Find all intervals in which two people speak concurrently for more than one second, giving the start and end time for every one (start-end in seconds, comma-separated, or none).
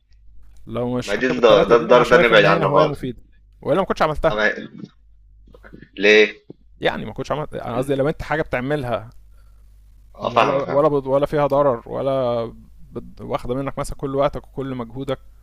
1.1-3.0